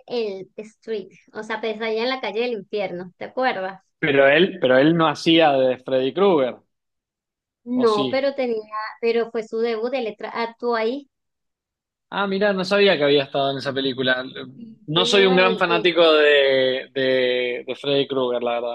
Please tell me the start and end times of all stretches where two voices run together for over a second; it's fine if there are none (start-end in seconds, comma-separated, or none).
14.9-16.1